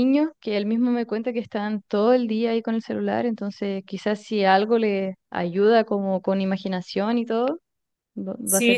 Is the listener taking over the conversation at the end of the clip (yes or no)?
yes